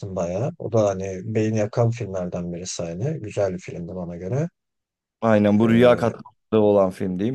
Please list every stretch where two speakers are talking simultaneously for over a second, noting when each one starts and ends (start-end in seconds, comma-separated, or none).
none